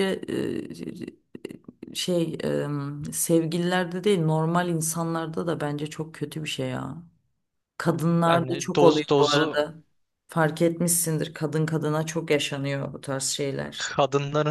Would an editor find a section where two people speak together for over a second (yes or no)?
yes